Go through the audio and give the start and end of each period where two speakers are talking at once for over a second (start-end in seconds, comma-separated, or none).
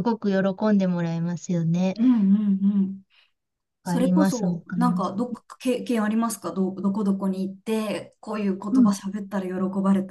3.8-5.1